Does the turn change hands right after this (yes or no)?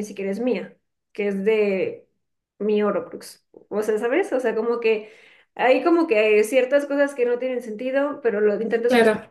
no